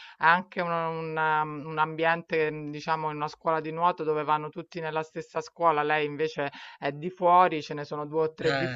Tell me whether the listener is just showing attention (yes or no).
yes